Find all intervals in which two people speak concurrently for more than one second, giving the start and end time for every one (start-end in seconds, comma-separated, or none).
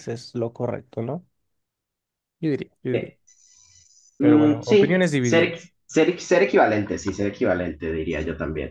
4.2-5.5